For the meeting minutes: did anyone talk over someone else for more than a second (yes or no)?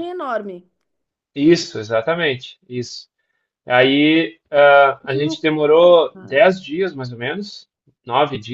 yes